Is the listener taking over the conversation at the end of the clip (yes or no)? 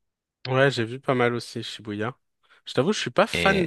no